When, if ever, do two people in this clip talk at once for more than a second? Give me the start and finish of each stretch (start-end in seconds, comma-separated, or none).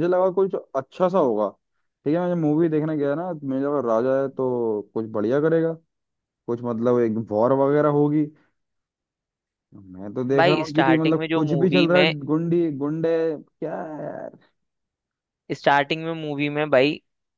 10.4-12.1